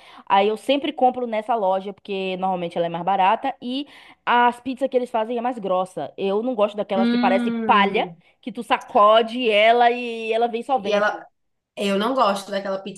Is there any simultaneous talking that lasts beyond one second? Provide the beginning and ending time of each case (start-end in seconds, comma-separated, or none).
7.0-8.2